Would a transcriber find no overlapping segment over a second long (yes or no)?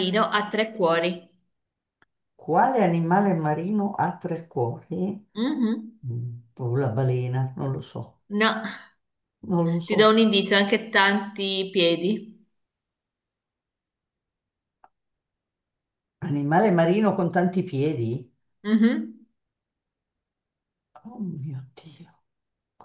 yes